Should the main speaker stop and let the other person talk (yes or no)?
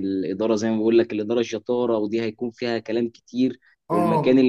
no